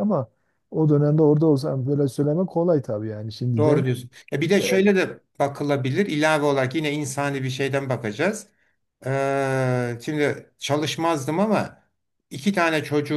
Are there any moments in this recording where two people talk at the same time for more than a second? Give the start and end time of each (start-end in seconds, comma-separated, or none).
none